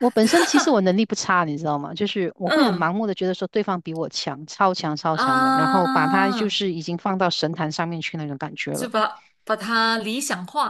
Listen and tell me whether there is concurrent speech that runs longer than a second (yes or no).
yes